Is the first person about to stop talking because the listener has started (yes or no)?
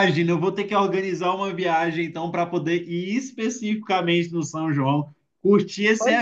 no